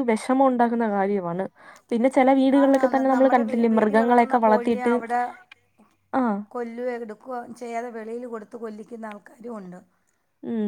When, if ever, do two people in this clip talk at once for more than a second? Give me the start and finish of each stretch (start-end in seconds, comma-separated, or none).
2.6-4.8